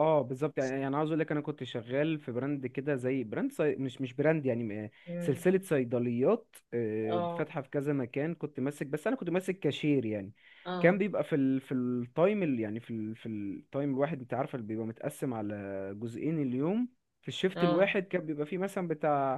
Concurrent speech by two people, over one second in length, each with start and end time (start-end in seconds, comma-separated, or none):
none